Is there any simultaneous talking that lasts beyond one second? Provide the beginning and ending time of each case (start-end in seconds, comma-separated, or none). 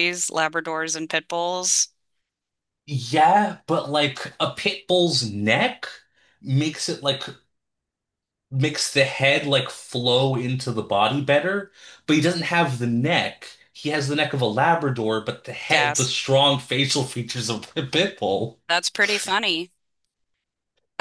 none